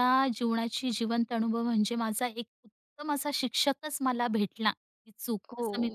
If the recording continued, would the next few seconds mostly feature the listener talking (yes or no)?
yes